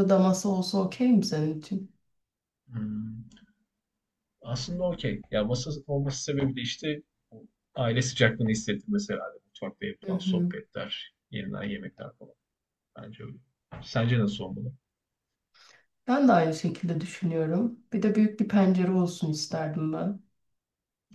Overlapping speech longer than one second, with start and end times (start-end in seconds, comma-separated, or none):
none